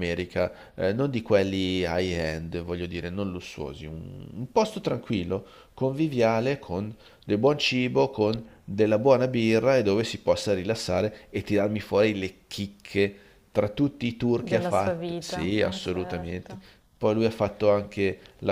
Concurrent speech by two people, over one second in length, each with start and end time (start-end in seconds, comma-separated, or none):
14.4-16.6